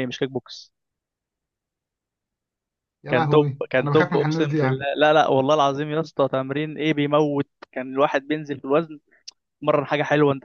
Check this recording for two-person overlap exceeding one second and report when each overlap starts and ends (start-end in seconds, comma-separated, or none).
3.1-4.8